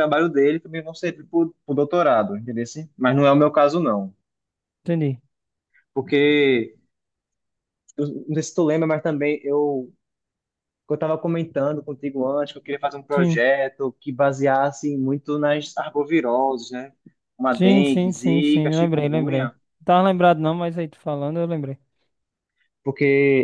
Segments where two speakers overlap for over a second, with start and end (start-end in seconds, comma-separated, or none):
17.6-19.5